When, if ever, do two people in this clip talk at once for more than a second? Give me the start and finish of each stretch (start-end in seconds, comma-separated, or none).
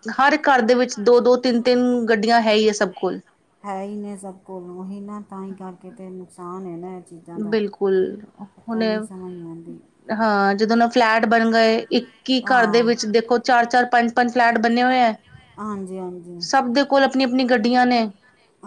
none